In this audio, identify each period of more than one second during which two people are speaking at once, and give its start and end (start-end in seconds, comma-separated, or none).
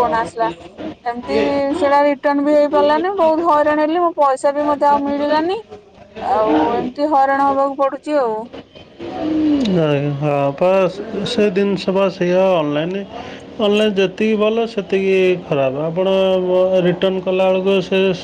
none